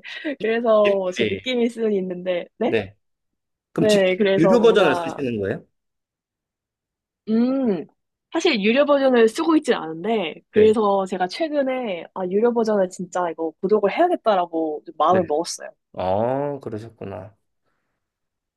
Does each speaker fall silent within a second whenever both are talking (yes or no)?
no